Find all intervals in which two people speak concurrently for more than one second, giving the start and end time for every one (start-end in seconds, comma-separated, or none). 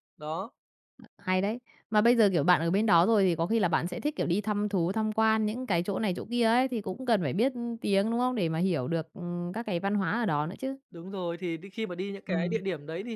none